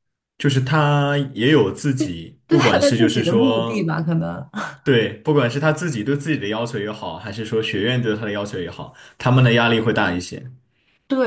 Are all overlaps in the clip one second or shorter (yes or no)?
no